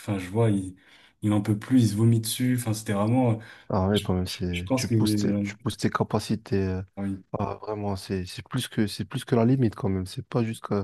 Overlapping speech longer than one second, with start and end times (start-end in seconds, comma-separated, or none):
3.9-5.5